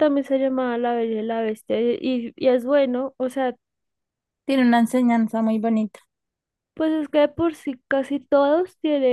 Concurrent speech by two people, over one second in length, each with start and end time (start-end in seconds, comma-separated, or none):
none